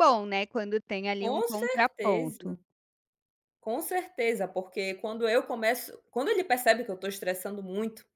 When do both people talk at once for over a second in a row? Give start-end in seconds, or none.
1.2-2.6